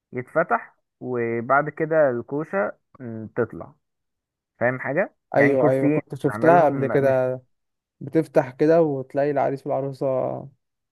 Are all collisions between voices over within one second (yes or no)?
no